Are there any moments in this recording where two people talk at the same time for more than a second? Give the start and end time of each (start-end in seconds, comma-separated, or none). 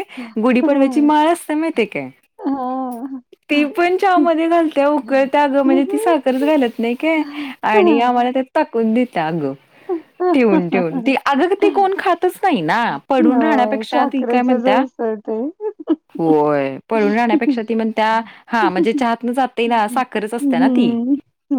13.3-14.8, 19.7-20.9